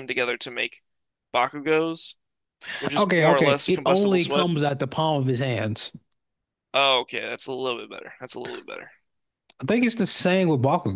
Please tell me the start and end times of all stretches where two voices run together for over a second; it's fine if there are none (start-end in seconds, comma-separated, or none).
3.0-4.5